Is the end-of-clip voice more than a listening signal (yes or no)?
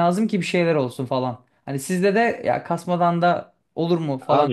yes